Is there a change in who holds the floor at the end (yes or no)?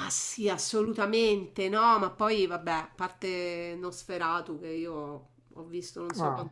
no